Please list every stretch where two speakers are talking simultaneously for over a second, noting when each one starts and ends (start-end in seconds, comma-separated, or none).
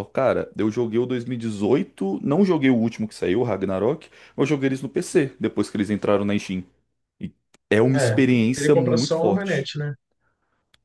7.9-9.7